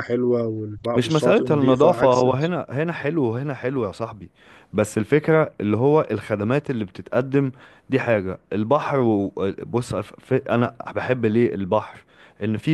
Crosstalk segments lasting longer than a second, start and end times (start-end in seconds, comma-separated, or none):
0.9-2.5